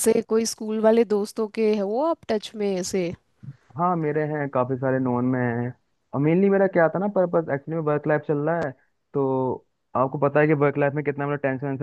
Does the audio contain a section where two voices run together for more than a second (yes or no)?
no